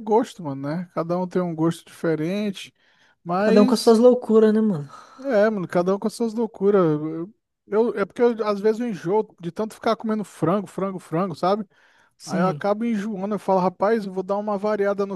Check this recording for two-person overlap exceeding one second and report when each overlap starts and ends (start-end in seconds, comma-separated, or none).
none